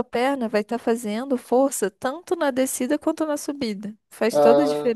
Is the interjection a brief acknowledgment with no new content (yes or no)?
no